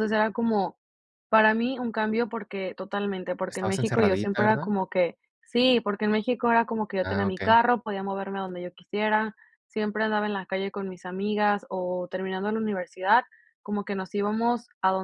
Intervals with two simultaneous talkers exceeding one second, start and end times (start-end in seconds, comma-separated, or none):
3.5-4.7